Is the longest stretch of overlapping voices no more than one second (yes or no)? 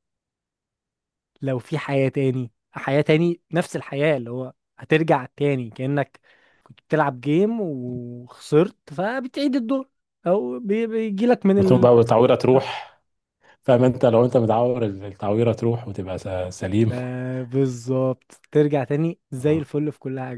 yes